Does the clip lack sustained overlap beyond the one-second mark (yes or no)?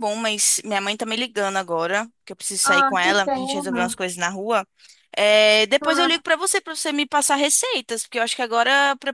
no